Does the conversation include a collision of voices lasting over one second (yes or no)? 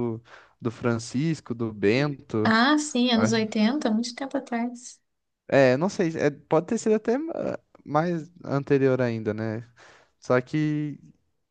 no